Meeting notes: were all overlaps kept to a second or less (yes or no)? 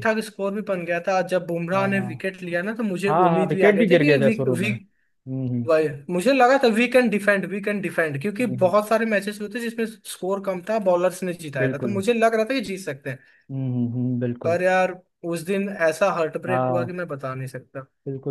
no